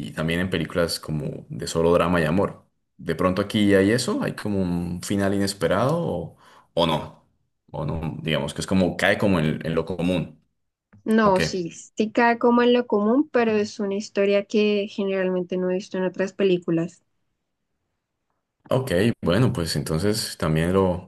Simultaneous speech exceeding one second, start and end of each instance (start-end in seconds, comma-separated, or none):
none